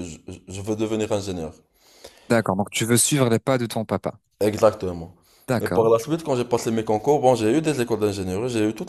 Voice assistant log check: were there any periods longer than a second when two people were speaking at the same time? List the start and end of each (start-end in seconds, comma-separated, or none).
none